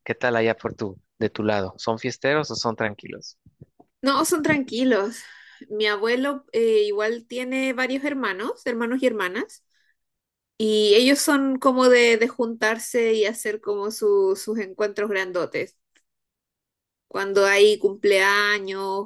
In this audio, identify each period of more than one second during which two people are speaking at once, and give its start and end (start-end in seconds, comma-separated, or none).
none